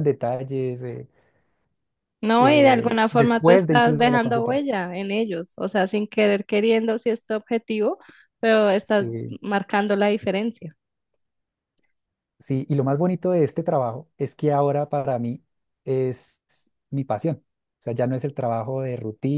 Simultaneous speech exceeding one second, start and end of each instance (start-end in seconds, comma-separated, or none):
2.4-4.6